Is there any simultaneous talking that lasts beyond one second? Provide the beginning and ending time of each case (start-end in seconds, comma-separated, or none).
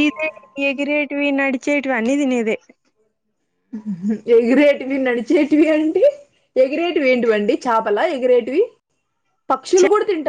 none